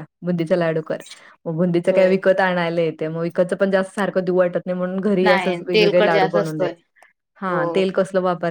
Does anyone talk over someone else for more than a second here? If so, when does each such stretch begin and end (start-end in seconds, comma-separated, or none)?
5.2-6.7